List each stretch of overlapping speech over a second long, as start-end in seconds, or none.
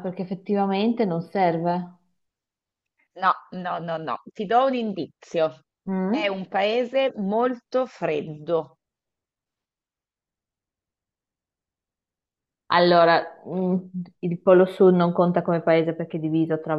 none